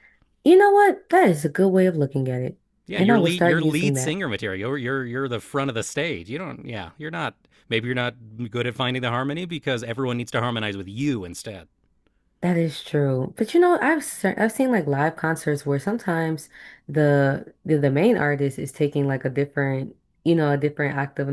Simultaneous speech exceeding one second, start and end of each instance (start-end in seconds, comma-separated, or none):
2.9-4.2